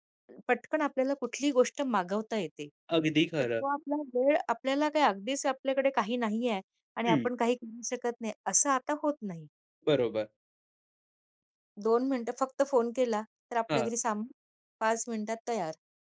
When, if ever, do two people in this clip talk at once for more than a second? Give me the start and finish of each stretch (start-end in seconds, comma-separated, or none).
none